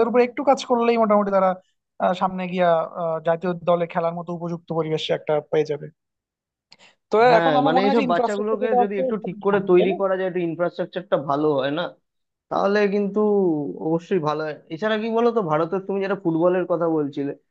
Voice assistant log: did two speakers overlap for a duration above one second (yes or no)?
yes